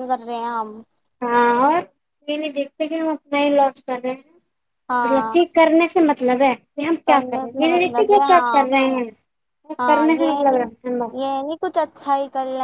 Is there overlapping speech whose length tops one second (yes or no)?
yes